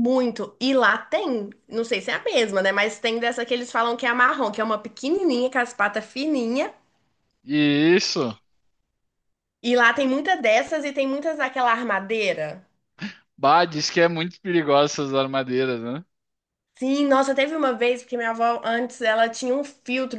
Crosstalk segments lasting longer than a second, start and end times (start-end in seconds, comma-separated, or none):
none